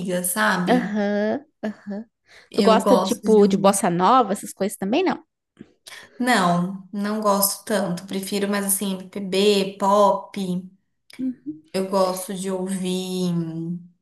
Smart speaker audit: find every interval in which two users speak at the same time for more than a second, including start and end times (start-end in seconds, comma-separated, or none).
2.5-3.8